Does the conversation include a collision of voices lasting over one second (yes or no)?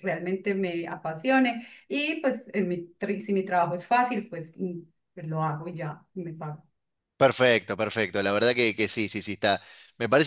no